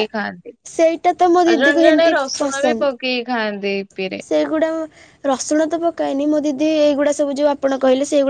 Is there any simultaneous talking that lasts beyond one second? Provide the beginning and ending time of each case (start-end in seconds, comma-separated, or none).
0.8-2.1